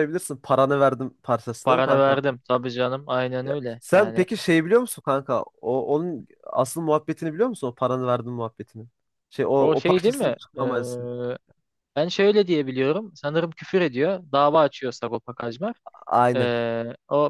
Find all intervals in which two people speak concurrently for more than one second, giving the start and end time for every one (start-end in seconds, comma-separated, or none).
9.6-11.1